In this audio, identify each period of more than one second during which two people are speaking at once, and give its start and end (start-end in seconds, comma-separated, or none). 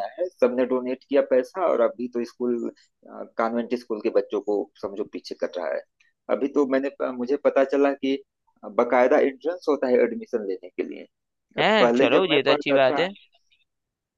11.6-13.1